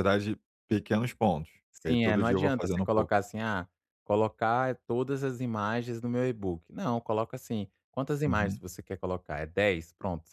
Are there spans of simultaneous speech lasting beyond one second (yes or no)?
yes